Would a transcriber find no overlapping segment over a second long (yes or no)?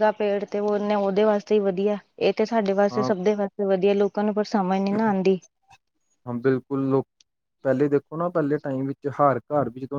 yes